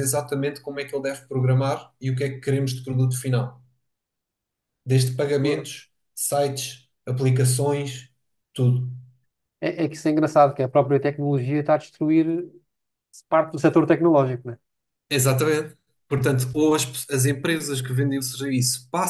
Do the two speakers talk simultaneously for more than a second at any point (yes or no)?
no